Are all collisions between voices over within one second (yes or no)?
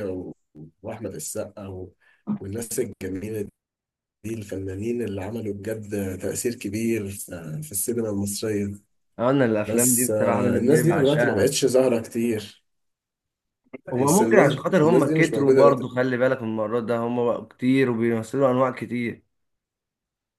no